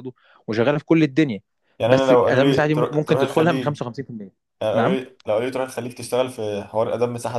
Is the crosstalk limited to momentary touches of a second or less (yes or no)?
no